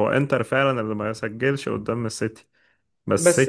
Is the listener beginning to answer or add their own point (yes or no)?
no